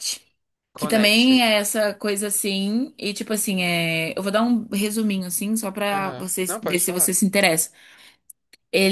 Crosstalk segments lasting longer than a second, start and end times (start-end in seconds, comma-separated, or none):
5.9-7.2